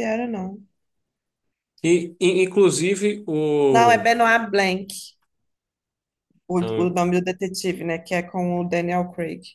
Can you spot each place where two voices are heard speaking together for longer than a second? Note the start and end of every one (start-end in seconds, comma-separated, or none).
none